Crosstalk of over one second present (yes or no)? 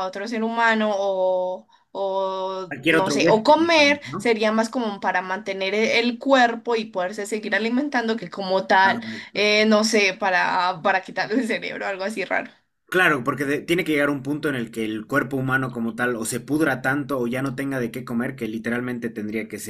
yes